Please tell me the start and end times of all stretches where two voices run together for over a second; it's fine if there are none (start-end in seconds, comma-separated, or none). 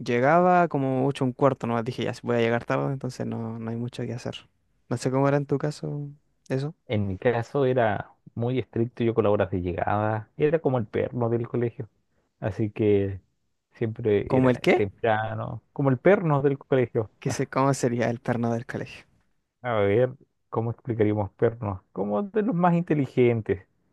none